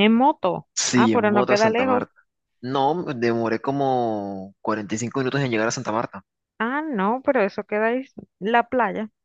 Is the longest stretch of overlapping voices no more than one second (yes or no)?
no